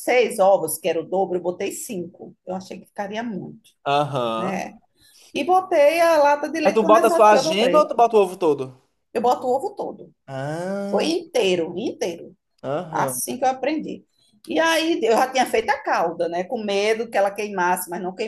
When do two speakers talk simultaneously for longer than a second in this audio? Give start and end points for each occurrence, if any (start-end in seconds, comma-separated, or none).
6.6-7.9